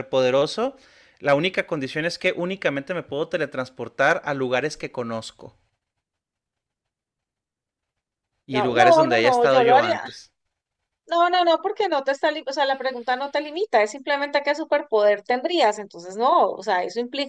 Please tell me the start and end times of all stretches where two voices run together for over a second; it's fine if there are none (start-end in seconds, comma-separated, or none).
8.5-10.0